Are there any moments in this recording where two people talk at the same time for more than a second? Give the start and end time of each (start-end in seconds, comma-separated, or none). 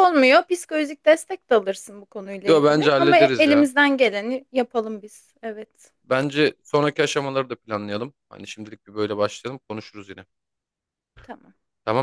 2.5-3.7